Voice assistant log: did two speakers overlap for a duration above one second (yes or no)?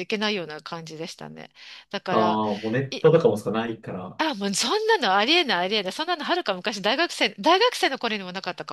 no